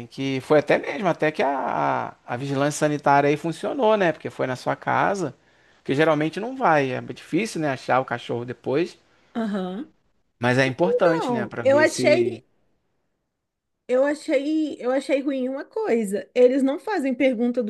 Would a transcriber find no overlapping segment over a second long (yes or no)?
no